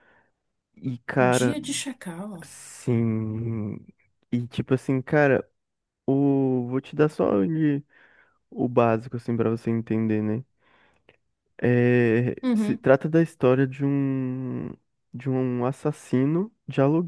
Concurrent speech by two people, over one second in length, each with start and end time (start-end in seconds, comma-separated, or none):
none